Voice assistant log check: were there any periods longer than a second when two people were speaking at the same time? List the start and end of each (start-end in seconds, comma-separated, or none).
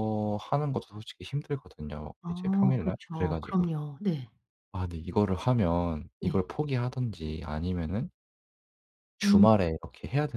2.2-3.7